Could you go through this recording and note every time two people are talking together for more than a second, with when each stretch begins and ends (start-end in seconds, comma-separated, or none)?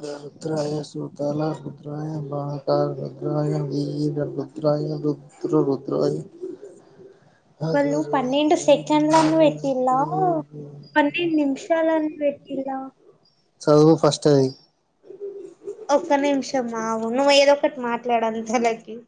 7.7-9.9